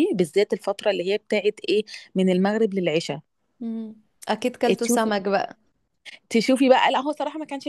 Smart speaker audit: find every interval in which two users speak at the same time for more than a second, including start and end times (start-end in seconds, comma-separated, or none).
none